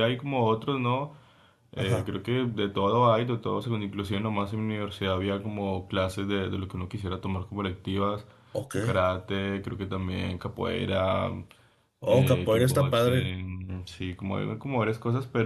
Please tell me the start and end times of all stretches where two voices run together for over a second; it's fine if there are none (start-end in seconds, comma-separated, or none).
12.0-13.3